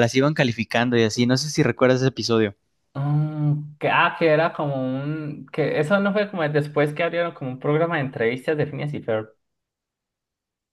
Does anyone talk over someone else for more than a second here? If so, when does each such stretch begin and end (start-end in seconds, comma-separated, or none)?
none